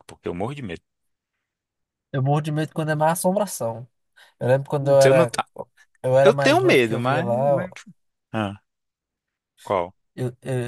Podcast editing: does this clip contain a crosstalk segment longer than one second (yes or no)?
yes